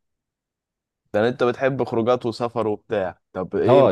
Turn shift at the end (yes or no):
yes